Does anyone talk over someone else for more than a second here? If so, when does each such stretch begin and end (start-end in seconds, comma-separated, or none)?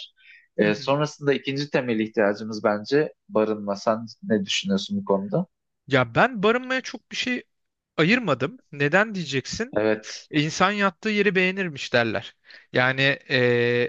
none